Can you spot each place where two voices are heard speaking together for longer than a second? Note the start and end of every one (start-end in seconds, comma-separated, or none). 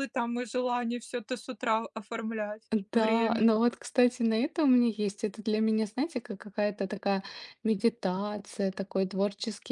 none